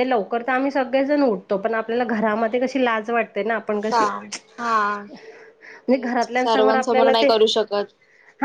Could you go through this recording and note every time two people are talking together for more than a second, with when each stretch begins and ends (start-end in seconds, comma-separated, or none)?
5.9-7.3